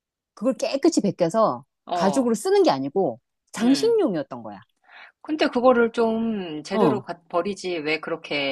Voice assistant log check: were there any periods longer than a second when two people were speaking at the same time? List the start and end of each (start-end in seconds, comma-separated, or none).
none